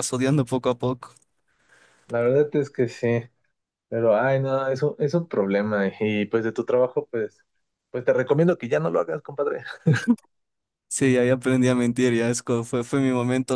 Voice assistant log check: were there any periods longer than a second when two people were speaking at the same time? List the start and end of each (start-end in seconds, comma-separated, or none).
none